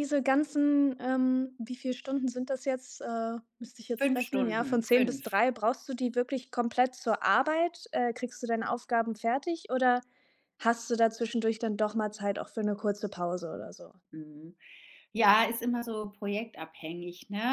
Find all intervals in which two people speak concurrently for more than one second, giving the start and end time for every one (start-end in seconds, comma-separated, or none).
4.0-5.4